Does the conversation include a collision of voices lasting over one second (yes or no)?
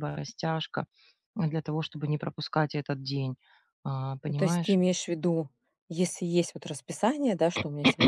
no